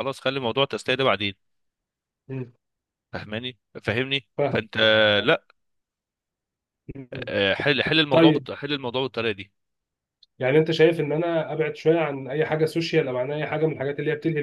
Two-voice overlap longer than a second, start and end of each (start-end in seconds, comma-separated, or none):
none